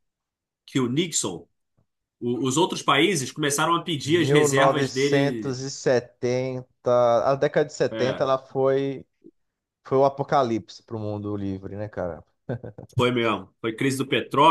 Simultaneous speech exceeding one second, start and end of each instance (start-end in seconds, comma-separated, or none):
4.0-5.6